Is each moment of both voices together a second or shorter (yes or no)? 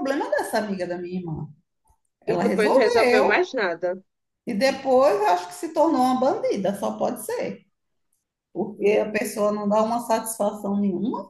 no